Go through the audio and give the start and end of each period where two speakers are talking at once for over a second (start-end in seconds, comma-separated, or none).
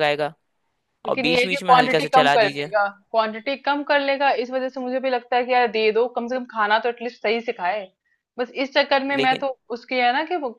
1.1-2.7